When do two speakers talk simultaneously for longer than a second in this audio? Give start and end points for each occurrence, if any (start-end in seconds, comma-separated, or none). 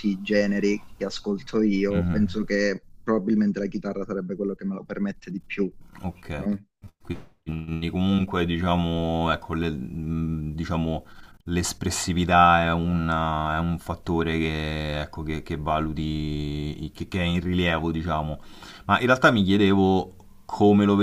none